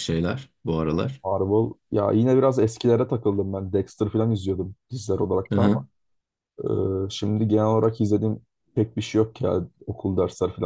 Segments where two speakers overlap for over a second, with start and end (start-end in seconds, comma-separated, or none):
none